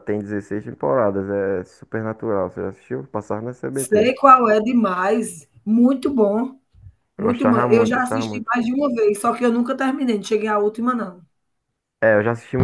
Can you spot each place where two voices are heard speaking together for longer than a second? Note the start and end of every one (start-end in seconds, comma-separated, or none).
7.2-8.5